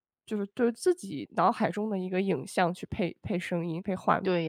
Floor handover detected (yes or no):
yes